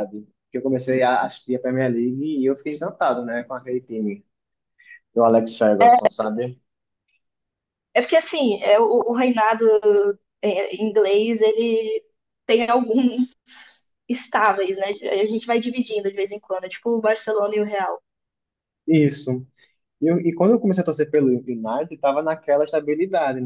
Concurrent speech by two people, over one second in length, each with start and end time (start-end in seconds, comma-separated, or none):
none